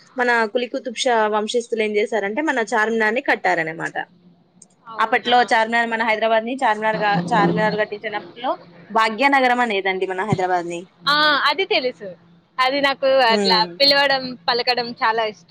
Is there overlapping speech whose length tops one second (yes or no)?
no